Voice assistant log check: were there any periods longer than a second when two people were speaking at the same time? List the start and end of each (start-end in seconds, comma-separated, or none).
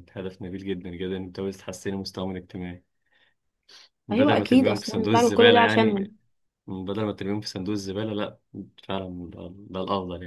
4.1-6.1